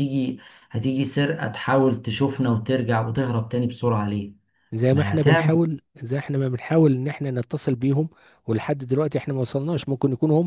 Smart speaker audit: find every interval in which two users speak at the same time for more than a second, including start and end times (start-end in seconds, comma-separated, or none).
none